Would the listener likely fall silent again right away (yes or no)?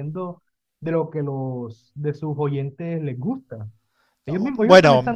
no